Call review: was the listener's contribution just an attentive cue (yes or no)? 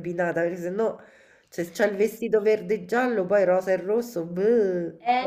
no